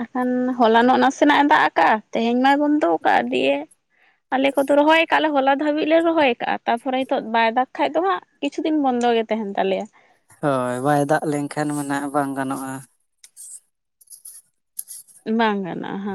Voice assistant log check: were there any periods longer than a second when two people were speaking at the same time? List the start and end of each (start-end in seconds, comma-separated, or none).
none